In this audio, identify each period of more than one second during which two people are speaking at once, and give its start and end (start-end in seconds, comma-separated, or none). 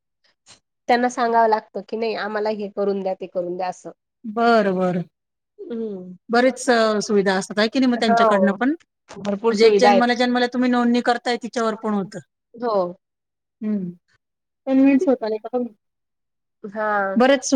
none